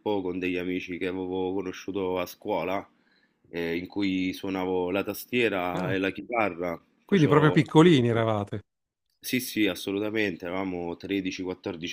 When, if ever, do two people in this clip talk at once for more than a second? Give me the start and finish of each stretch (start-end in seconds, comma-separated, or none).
none